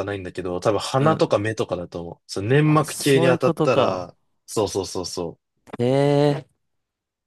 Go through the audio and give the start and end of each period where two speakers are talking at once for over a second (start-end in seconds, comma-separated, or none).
2.6-4.1